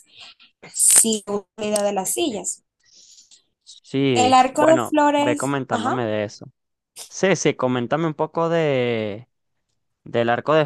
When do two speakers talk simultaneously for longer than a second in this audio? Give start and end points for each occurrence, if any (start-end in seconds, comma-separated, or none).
4.1-5.9